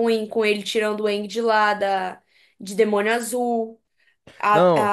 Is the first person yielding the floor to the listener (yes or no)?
no